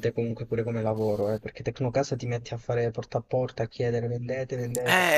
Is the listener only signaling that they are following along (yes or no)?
no